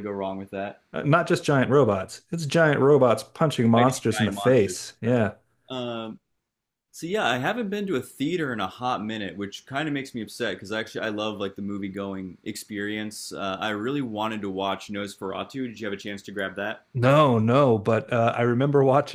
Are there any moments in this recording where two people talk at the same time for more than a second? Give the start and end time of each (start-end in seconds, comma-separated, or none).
3.7-5.3